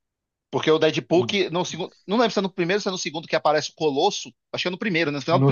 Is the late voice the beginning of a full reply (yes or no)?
yes